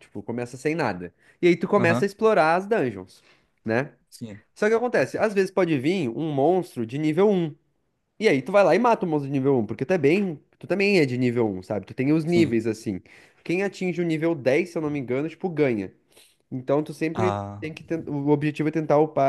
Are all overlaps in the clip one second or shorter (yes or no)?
yes